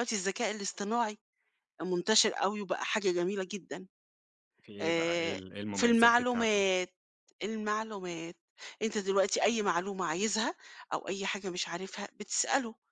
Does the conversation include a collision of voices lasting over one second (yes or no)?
yes